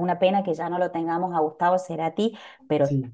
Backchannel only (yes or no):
yes